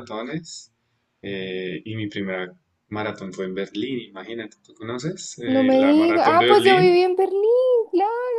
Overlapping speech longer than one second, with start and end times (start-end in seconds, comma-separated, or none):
5.5-7.0